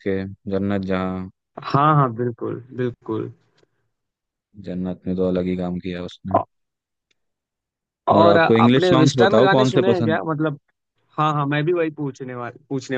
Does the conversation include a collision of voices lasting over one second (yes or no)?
yes